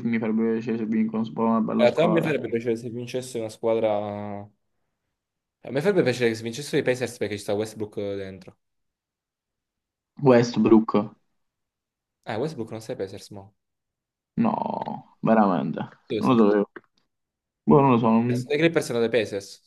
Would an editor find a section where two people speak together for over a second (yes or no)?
no